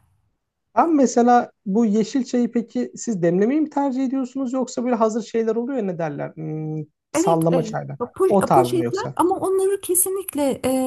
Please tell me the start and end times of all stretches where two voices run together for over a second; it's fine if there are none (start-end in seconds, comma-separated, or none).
7.1-9.2